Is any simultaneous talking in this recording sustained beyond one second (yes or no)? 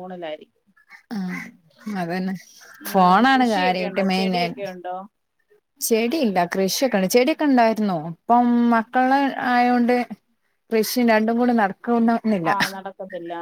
yes